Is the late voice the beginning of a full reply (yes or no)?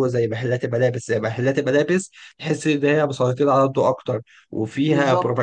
no